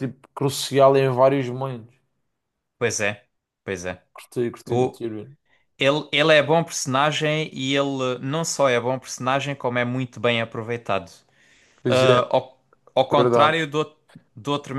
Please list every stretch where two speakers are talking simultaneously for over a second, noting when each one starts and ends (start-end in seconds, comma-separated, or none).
none